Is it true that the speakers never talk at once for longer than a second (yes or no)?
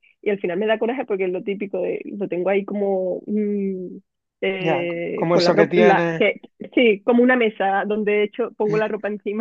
no